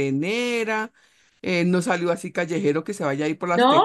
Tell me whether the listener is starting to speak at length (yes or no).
no